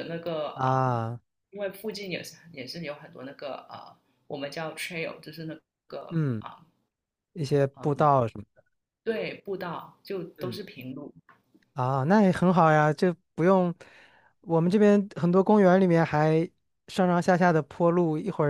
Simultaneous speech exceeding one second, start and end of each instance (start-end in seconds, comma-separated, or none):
none